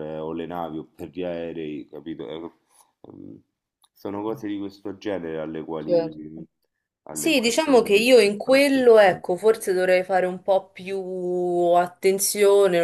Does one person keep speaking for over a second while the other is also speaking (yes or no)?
yes